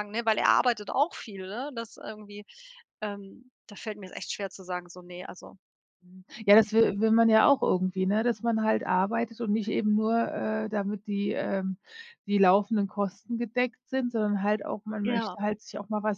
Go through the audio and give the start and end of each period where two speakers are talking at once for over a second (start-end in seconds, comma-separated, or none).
none